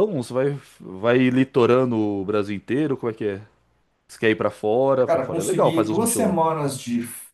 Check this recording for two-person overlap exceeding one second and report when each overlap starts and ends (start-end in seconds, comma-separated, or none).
5.1-6.4